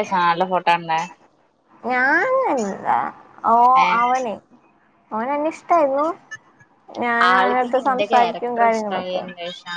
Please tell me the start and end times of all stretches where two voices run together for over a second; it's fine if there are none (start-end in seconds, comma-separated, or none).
7.3-9.2